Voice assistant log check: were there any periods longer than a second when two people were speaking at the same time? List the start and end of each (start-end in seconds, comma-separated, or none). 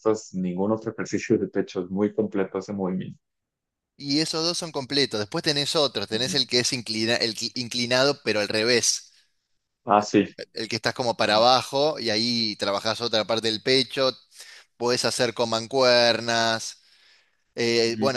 none